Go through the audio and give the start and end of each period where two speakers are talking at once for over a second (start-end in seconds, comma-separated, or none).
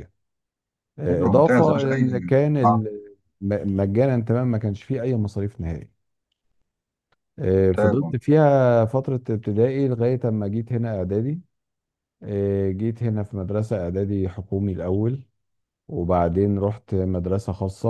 1.1-2.8